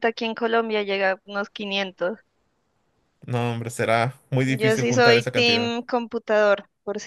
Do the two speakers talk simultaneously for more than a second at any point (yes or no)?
yes